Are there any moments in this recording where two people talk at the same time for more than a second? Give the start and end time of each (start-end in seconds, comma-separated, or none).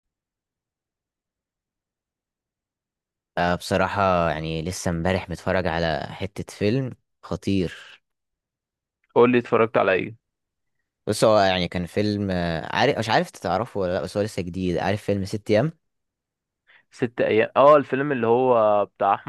none